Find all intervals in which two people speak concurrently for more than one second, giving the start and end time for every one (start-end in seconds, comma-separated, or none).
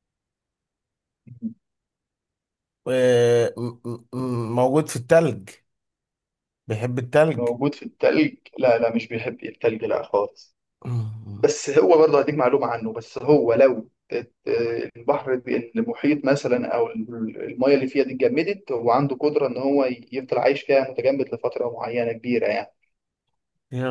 none